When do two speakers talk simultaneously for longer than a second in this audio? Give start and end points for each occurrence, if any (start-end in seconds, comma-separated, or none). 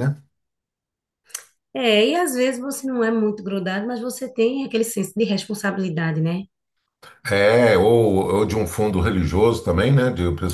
none